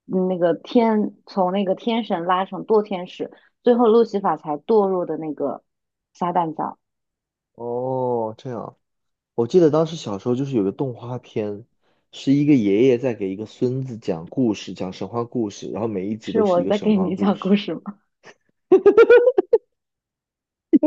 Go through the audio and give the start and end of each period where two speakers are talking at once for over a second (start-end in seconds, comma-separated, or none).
16.2-17.6